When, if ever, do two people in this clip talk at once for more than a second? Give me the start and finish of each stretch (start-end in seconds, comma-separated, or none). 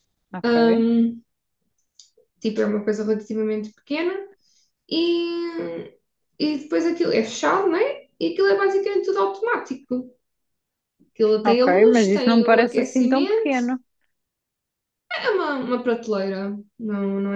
11.4-13.6